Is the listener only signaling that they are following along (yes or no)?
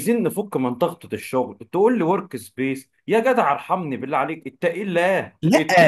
no